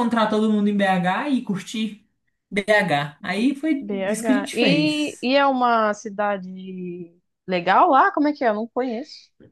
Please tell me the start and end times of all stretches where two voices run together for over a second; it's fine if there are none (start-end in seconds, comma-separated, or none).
3.8-5.3